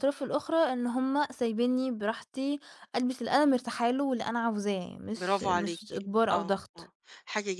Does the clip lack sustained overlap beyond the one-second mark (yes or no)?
no